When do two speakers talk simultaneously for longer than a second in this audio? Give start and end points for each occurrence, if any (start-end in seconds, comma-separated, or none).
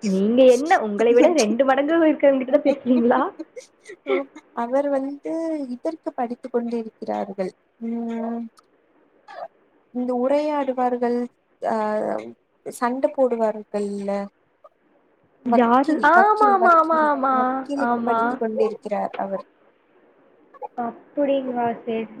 15.6-17.7